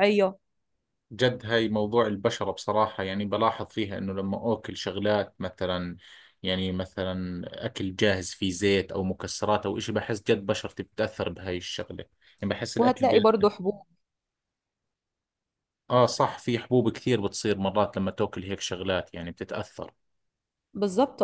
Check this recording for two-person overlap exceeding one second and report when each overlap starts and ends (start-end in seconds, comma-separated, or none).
none